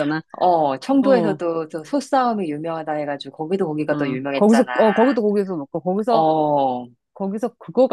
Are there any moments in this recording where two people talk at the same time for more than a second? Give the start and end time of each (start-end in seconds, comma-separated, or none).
none